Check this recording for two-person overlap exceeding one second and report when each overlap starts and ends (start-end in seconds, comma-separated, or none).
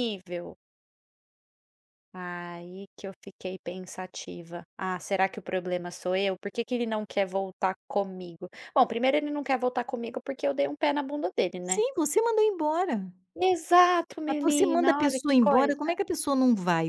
14.3-16.0